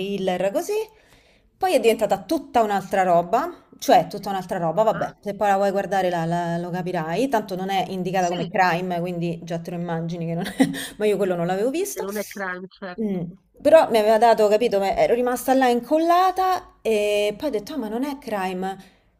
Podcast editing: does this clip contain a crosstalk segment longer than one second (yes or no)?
no